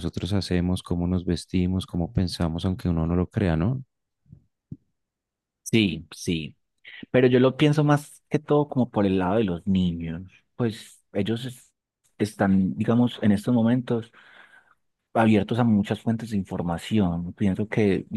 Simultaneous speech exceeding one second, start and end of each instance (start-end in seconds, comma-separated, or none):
none